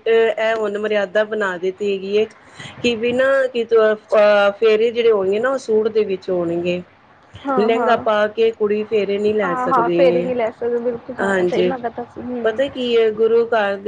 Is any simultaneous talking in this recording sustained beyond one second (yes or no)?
no